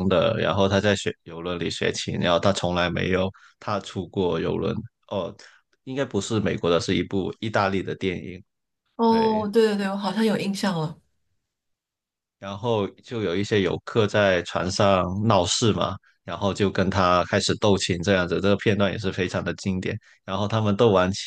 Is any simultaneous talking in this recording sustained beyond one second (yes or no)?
no